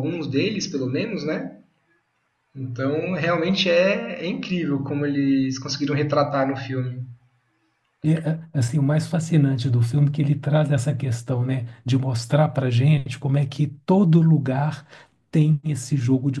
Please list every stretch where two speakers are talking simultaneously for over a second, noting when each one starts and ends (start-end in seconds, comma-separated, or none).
none